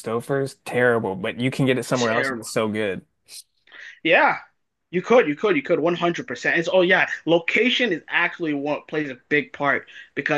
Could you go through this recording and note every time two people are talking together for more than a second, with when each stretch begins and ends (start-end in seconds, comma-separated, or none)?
none